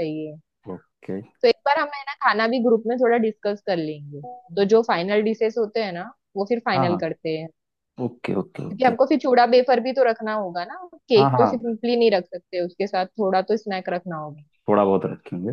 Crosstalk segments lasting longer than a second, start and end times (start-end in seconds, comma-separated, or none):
none